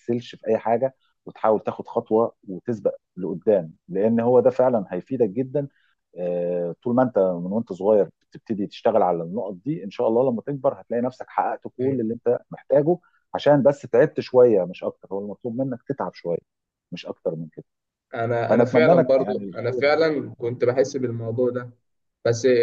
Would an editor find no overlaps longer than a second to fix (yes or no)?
no